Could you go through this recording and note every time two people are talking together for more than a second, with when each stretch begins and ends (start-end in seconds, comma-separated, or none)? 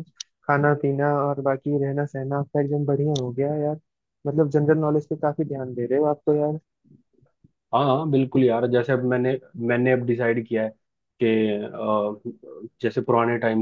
none